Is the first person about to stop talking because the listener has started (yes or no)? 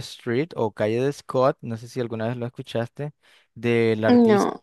no